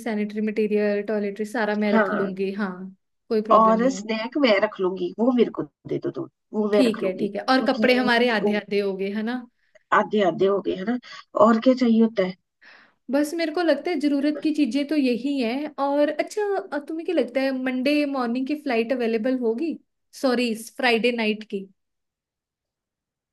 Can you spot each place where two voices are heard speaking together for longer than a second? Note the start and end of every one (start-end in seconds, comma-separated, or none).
6.7-8.5